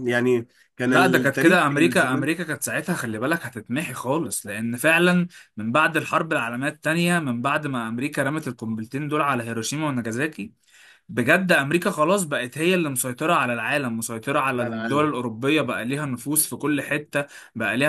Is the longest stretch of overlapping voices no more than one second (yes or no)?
no